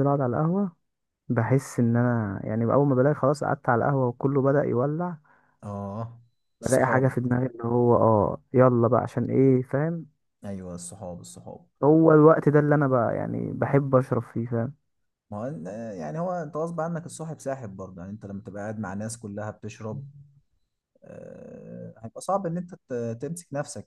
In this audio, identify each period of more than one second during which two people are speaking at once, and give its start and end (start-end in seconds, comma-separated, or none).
none